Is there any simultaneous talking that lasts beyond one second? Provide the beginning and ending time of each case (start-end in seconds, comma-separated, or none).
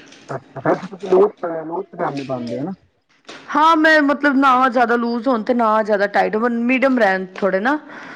none